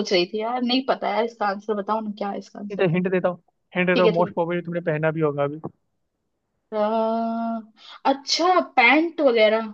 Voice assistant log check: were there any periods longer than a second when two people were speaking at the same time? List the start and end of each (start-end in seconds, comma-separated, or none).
none